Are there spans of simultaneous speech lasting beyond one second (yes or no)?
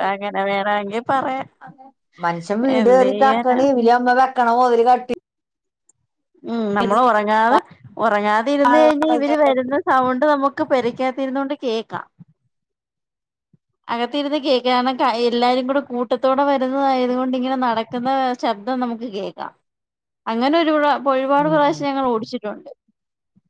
no